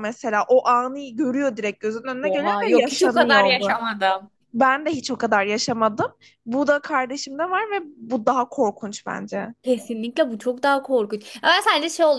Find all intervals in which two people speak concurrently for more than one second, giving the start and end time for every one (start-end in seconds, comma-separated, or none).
2.2-3.7